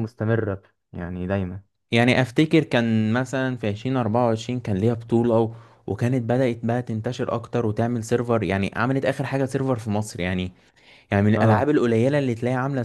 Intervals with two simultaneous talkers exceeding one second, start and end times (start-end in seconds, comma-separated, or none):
none